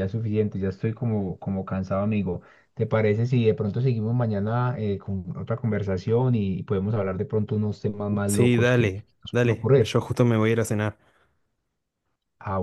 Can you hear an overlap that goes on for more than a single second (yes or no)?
yes